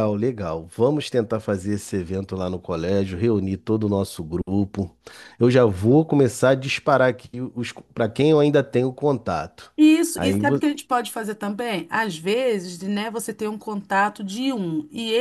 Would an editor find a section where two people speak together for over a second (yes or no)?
no